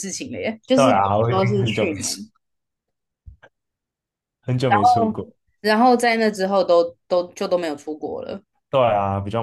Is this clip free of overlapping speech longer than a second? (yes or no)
no